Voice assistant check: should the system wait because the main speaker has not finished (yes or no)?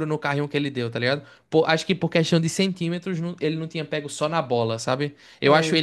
yes